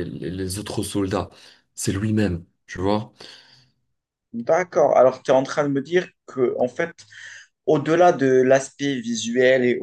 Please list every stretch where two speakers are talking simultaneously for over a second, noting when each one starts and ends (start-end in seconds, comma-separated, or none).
none